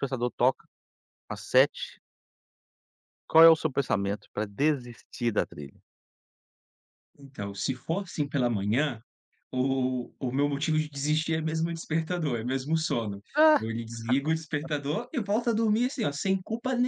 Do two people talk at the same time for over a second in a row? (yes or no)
no